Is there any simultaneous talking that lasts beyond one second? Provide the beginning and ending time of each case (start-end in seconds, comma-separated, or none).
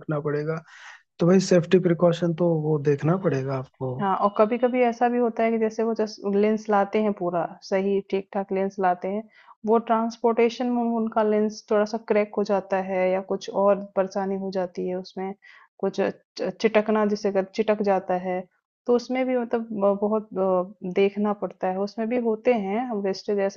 none